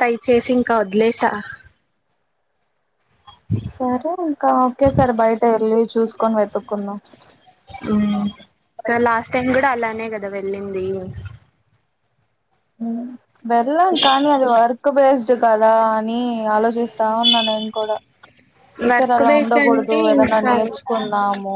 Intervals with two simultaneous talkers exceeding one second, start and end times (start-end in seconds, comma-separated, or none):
18.9-20.5